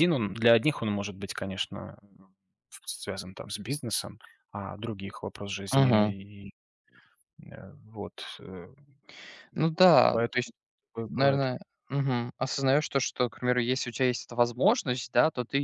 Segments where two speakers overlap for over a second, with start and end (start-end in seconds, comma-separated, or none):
none